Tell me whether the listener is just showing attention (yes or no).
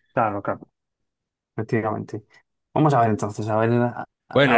no